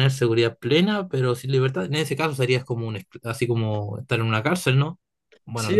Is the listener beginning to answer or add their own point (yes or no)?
yes